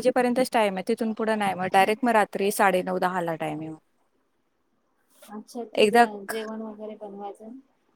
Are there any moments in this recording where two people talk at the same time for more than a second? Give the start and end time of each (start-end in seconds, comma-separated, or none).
none